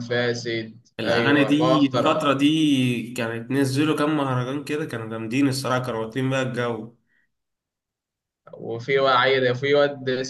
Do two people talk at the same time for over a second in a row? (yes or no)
yes